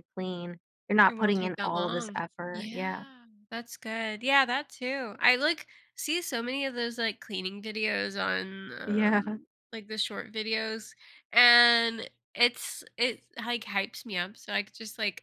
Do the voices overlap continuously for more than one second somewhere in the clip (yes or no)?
yes